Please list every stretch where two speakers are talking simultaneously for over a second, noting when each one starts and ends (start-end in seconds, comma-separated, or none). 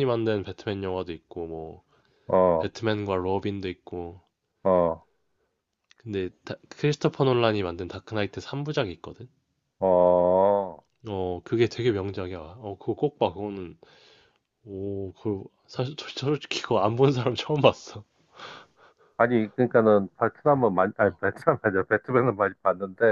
none